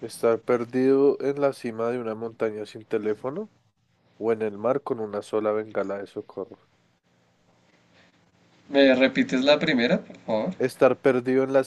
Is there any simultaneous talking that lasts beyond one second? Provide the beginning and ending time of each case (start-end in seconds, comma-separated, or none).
none